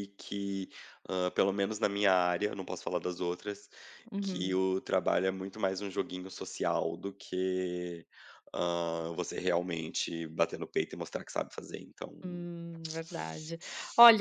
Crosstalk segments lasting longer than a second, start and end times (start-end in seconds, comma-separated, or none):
none